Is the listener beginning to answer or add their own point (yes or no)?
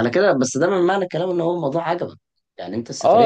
yes